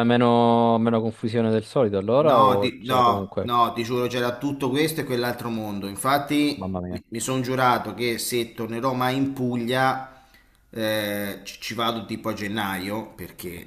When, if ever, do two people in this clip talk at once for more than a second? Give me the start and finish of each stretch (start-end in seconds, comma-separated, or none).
2.2-3.5